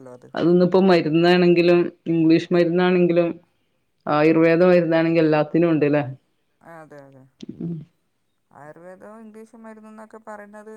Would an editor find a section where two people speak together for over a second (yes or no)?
no